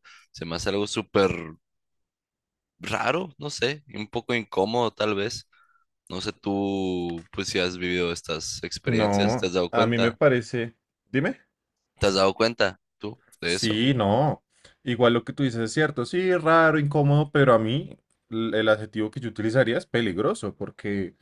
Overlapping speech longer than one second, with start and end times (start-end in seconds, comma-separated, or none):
8.8-10.2